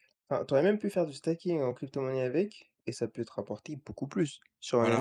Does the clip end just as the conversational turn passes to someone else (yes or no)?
no